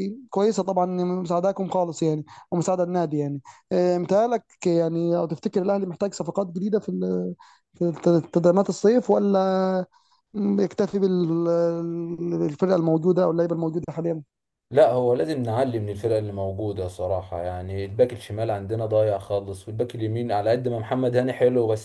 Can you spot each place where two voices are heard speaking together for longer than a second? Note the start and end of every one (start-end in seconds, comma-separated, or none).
none